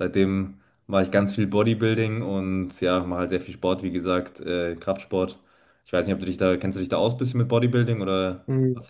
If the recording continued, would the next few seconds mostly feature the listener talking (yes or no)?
yes